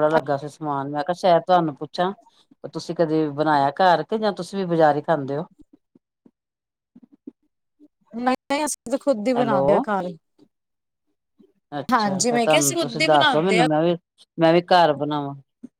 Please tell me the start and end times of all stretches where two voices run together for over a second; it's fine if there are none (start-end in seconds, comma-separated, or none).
11.9-13.6